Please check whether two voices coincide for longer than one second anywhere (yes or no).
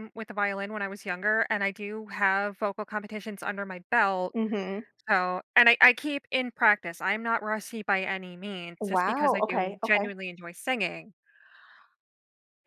yes